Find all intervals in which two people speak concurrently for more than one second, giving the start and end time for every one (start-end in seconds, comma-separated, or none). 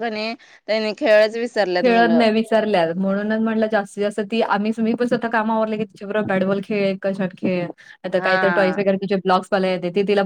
none